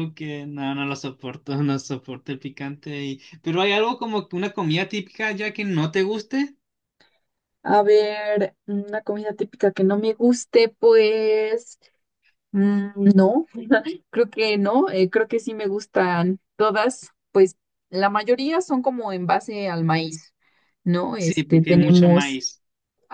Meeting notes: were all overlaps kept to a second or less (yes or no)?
no